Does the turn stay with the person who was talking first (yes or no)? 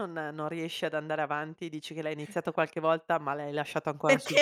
no